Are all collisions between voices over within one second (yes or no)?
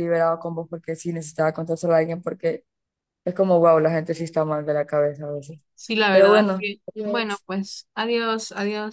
yes